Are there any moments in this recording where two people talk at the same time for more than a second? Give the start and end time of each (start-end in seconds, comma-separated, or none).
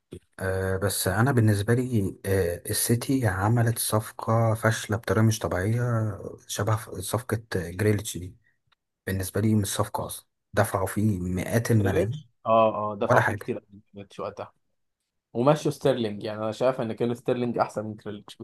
none